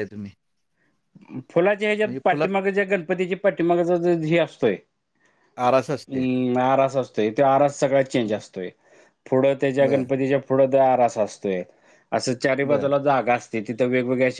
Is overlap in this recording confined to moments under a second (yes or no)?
yes